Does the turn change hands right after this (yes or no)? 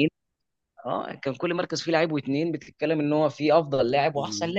yes